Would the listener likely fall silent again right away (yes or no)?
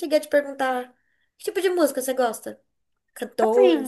no